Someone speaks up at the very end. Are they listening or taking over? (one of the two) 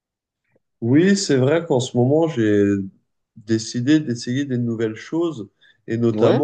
listening